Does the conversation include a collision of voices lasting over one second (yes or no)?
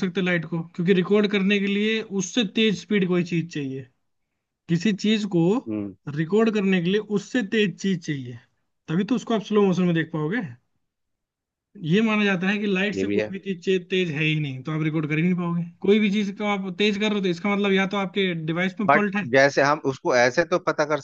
no